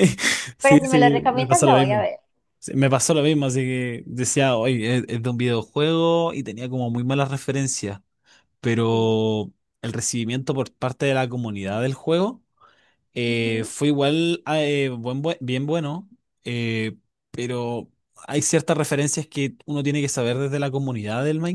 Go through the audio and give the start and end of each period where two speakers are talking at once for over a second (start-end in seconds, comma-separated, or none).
0.6-2.1